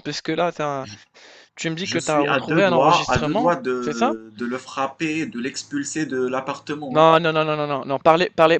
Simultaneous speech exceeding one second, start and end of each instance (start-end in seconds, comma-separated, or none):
1.8-4.2